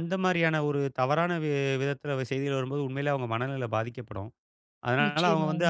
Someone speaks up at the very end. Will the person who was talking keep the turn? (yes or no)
yes